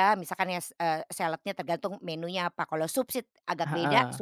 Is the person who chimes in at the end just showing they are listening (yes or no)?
yes